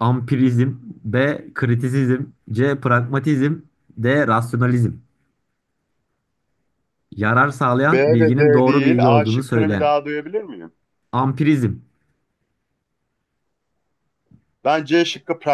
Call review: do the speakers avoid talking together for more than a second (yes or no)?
no